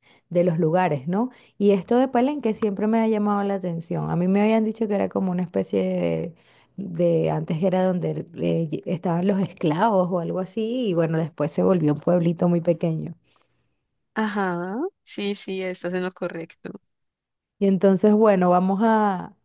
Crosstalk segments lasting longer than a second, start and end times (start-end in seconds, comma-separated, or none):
none